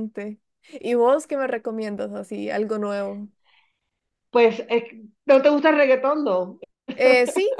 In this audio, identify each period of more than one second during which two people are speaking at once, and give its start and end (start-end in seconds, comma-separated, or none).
none